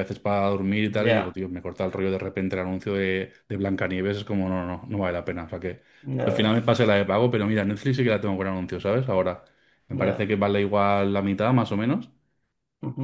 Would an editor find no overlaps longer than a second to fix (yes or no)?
yes